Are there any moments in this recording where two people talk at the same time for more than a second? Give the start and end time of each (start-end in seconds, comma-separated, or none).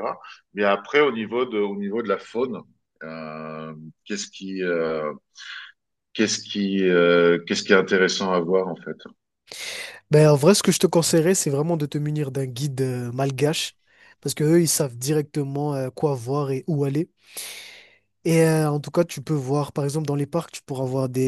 none